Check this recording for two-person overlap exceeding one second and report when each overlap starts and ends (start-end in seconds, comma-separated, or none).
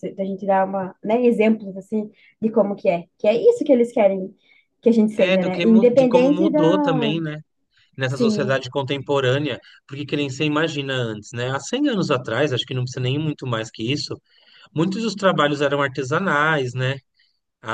5.2-7.2